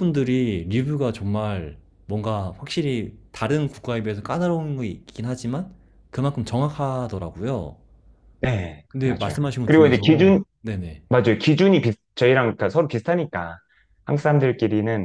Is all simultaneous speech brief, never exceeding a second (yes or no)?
no